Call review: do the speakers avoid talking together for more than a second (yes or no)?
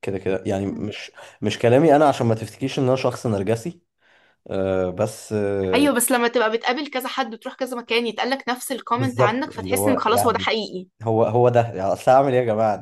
no